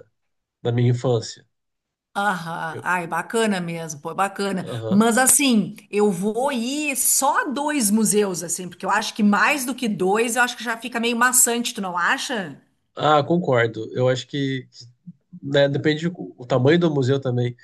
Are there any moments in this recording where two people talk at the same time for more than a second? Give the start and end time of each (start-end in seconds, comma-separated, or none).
none